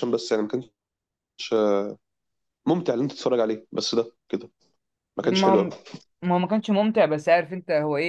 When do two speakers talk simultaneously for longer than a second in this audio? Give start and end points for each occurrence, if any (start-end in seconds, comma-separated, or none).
none